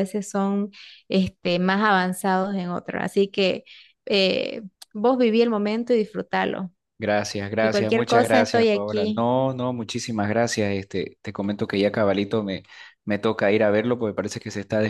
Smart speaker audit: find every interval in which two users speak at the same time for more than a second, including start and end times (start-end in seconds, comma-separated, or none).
7.6-9.2